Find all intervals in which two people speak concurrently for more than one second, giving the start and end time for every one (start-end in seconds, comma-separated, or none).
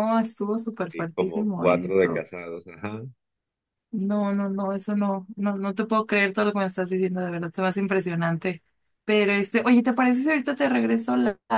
0.9-2.2